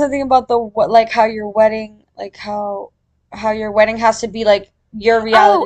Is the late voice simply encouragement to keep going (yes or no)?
no